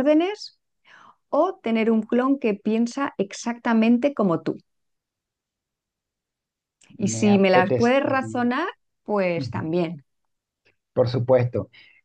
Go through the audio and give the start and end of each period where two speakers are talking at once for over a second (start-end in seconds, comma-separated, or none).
7.0-8.5